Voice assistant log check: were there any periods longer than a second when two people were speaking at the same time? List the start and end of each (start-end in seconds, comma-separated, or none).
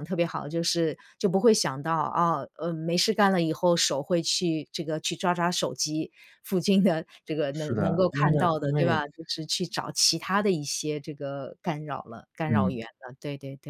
7.5-9.0